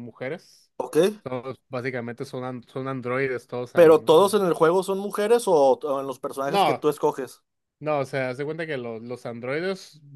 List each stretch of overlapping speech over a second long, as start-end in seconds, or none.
none